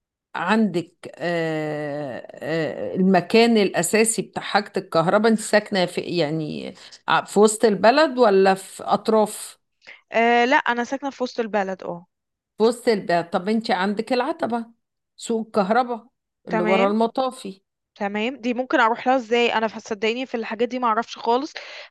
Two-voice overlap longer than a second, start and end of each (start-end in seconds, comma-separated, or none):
none